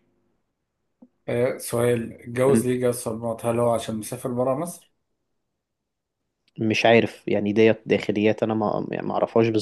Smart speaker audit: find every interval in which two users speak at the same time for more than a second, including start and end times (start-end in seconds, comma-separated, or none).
none